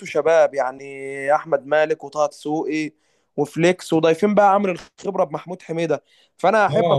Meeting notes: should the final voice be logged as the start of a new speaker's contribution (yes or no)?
yes